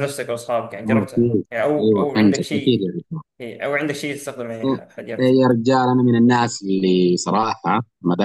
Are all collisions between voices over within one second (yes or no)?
no